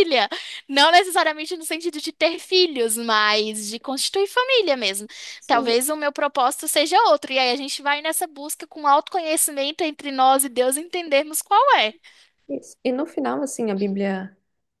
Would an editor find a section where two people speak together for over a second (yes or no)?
no